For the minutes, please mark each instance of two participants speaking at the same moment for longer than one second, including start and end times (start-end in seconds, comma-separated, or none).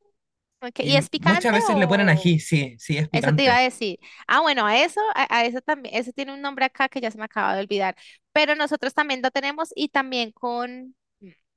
0.8-2.4